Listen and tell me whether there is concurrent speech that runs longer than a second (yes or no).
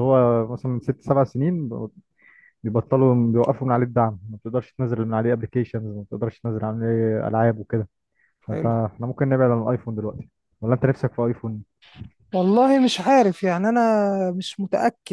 no